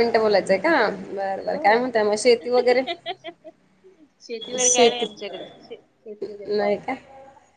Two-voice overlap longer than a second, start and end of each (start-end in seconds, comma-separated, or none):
none